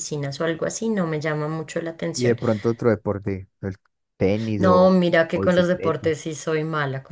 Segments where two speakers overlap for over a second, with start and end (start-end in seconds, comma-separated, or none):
4.6-6.1